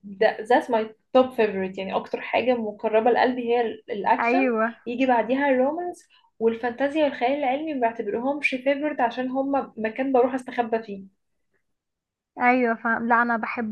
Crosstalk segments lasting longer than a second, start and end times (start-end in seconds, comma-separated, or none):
none